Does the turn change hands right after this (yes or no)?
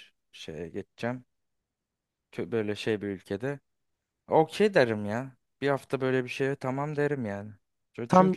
no